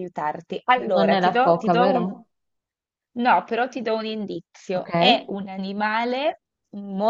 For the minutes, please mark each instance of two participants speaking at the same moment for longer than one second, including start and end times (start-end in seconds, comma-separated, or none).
0.9-2.1